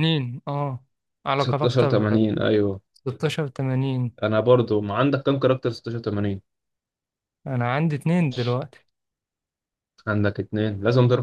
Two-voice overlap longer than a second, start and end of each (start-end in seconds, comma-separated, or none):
1.4-2.8